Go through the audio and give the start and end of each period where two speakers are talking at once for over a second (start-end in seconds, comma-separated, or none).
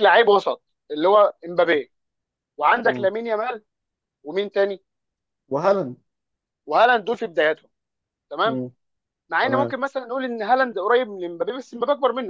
none